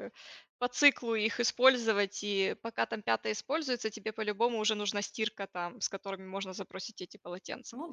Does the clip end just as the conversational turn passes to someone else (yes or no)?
yes